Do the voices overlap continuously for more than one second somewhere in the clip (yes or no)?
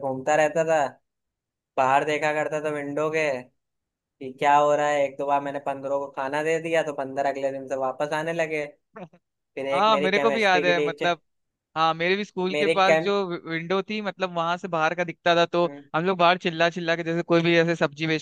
yes